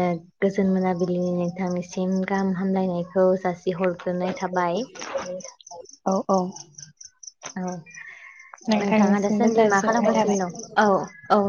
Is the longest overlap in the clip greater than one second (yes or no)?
yes